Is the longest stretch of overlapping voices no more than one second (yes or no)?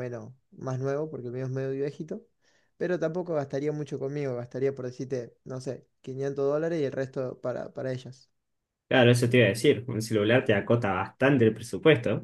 yes